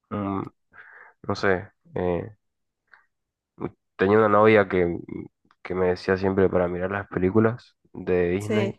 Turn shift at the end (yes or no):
no